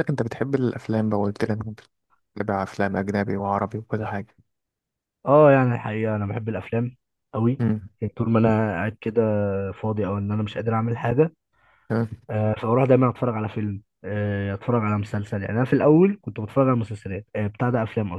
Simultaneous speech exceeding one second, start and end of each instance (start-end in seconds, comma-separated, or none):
none